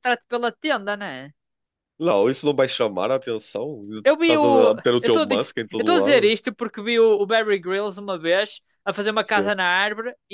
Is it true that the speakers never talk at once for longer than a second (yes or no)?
no